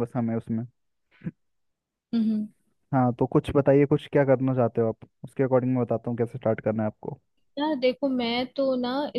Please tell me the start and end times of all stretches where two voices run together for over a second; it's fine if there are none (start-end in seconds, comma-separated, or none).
none